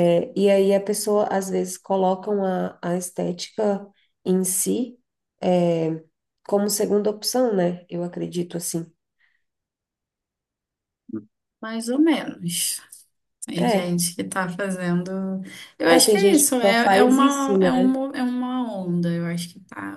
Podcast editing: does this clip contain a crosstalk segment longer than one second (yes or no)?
yes